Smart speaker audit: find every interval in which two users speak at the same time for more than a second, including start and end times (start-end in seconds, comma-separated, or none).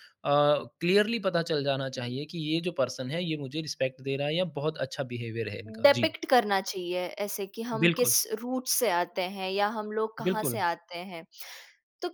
none